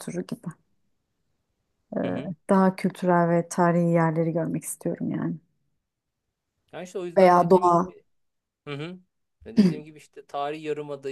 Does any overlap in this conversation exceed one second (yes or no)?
no